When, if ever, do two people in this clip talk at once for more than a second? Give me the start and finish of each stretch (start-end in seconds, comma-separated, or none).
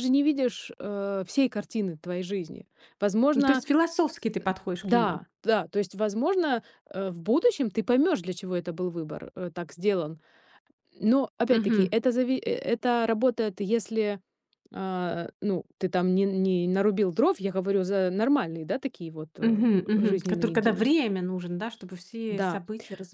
19.4-20.9